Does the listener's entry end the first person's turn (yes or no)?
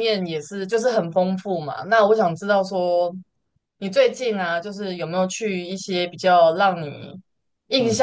no